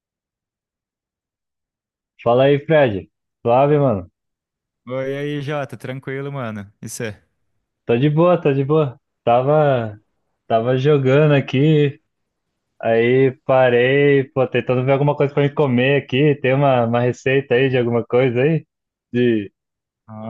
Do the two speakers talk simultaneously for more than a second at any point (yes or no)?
no